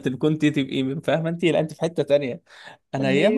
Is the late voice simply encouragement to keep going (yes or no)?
yes